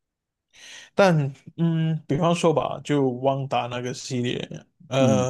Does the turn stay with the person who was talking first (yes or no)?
yes